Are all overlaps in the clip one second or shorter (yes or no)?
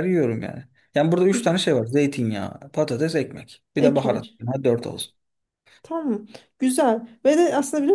yes